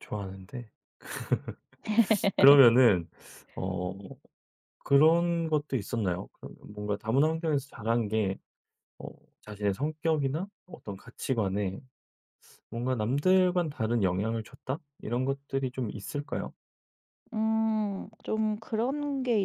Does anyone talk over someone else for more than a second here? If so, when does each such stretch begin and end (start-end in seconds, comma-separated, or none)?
none